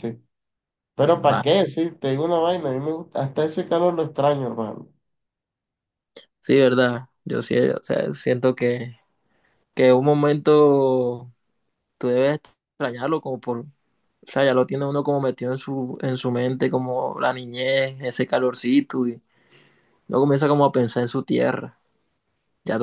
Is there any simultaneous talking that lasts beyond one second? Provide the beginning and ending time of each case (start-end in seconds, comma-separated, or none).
none